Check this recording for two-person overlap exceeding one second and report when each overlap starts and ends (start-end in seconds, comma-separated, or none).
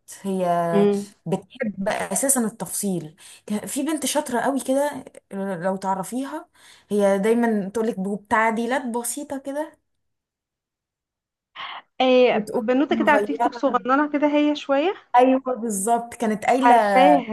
12.3-13.6